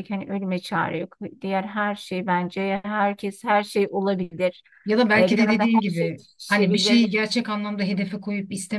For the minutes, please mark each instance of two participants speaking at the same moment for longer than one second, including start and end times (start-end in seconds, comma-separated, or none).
5.2-7.2